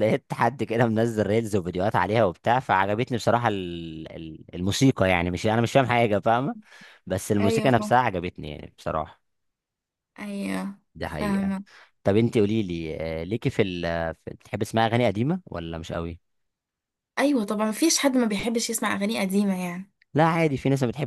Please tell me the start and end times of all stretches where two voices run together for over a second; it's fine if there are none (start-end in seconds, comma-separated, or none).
none